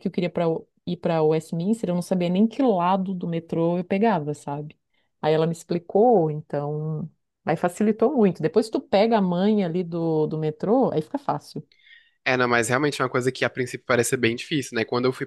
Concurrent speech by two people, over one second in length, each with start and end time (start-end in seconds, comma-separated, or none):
none